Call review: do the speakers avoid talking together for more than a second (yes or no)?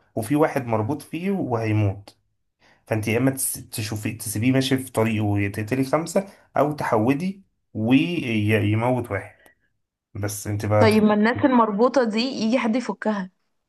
yes